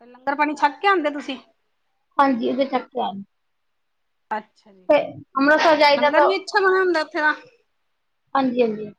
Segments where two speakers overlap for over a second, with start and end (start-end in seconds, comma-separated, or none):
none